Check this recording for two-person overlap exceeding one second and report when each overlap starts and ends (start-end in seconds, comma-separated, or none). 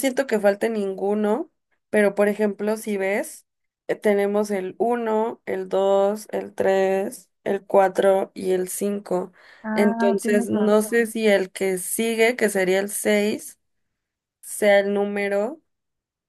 9.7-11.1